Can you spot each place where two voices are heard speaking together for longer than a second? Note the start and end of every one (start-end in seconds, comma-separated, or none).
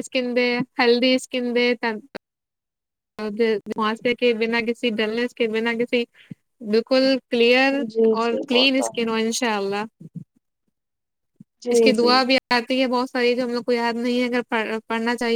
none